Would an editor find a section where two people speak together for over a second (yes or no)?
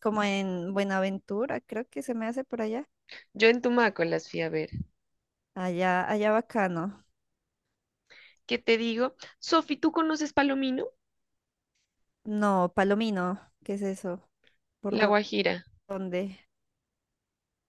no